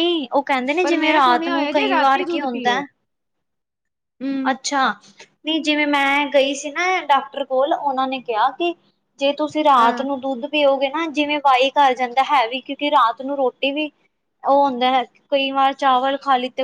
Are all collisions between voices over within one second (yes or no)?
no